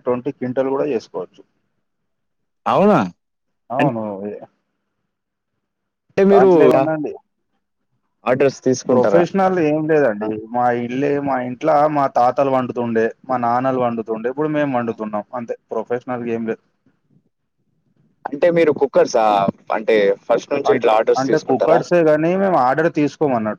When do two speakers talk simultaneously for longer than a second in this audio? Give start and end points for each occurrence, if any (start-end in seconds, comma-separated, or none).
none